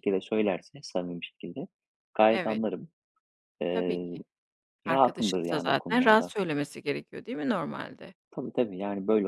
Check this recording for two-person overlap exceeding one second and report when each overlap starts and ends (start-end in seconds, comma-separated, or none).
4.9-6.3